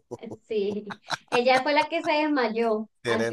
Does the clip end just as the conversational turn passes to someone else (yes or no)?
no